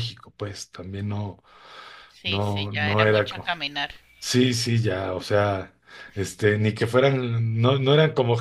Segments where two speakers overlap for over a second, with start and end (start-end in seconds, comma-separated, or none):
2.2-3.5